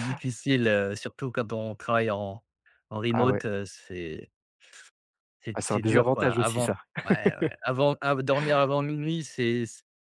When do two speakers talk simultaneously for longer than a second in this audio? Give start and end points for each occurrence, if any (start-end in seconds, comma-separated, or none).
5.5-6.8